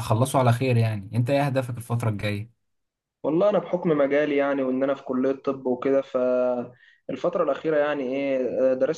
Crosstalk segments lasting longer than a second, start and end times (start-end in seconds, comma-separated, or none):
none